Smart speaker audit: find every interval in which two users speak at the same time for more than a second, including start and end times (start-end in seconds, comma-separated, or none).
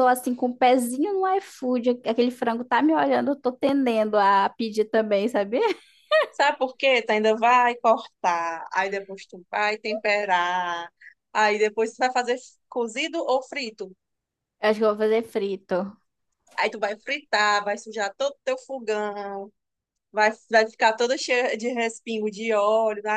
none